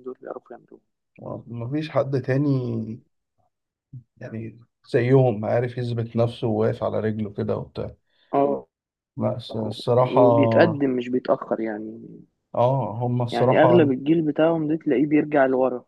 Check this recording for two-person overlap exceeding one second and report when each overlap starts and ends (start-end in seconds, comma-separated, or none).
none